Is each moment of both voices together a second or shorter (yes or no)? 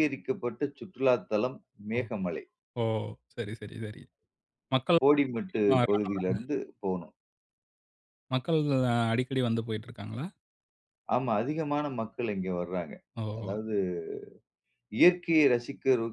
no